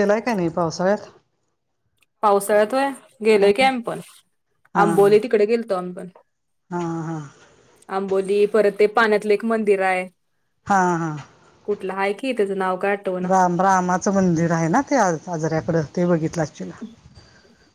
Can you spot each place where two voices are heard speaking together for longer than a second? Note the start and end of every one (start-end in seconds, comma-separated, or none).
none